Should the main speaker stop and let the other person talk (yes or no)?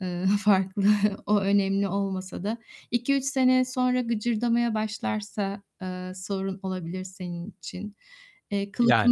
no